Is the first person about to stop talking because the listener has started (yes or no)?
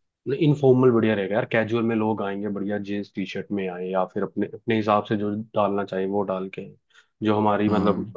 no